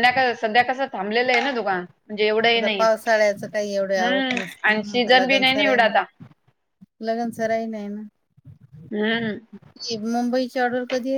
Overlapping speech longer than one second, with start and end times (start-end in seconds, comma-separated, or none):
4.0-6.0